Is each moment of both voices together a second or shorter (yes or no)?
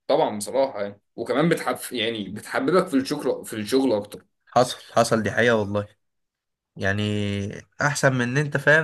yes